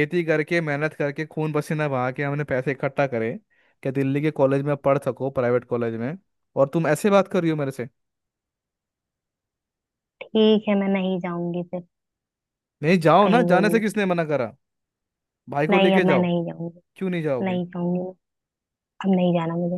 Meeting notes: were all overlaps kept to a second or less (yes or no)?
yes